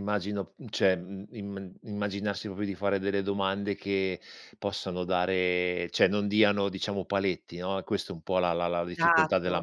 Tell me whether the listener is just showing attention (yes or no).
no